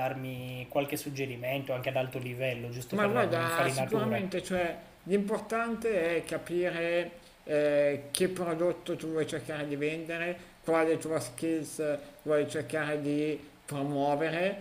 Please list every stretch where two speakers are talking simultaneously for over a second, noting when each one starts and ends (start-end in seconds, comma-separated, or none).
3.0-4.2